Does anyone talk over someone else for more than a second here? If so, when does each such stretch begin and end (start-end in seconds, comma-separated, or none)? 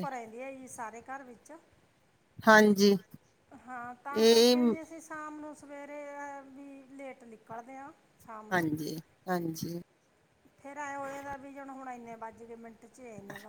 none